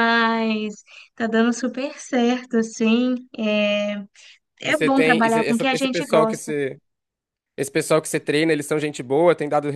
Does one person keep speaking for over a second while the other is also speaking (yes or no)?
yes